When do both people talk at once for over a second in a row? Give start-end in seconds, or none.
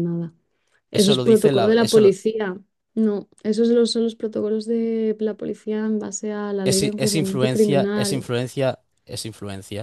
0.9-2.2, 6.6-8.3